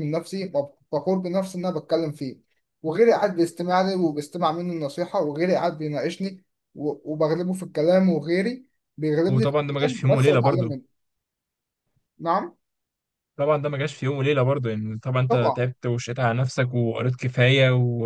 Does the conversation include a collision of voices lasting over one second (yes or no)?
yes